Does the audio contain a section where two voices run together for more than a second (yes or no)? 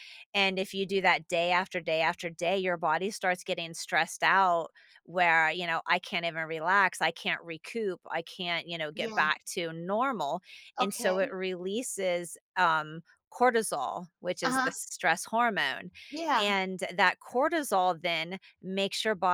no